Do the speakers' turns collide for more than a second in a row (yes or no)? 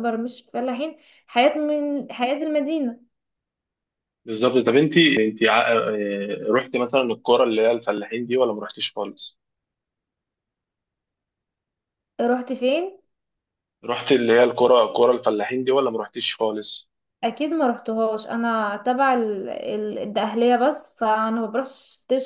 no